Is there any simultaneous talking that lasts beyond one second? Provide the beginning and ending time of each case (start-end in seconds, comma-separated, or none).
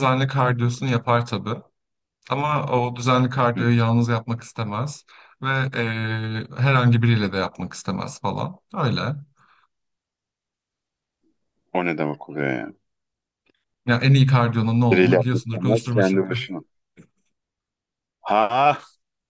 14.9-16.2